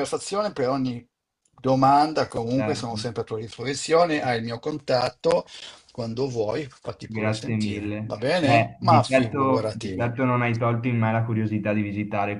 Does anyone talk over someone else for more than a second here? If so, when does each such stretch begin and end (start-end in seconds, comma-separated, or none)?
7.0-10.1